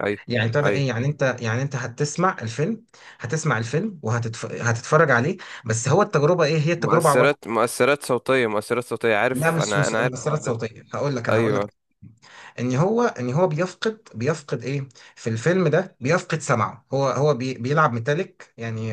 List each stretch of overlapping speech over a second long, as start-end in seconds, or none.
9.3-10.6